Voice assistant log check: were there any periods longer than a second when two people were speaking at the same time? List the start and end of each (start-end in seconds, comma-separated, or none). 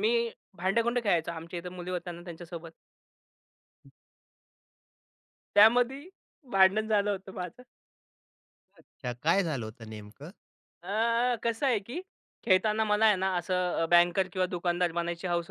none